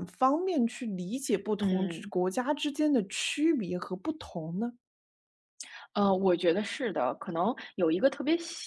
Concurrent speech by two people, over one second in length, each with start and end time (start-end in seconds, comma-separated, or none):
none